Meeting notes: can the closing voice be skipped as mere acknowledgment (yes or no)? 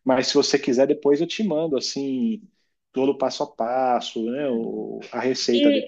no